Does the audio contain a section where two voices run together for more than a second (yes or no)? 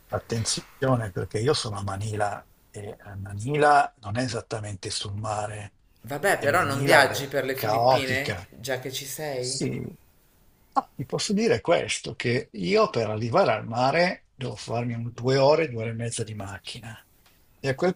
yes